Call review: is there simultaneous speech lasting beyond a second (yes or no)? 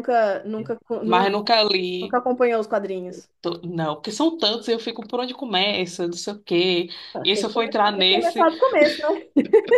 yes